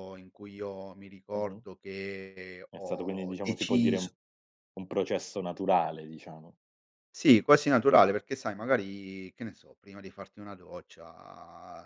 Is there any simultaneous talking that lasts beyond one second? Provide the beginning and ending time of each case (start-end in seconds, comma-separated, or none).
2.7-4.1